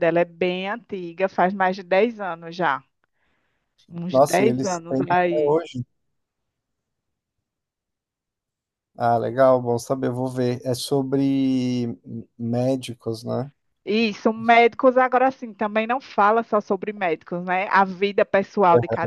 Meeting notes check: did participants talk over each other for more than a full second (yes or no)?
yes